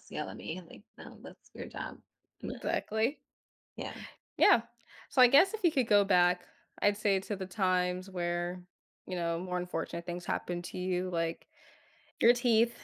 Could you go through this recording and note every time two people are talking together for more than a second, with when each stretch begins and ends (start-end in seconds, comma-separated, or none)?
none